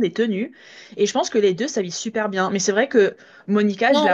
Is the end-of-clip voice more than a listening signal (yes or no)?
no